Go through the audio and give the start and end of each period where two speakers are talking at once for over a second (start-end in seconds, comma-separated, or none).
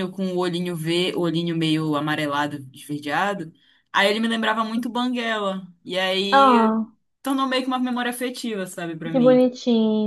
none